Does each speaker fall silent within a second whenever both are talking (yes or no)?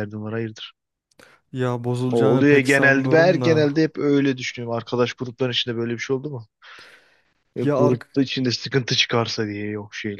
no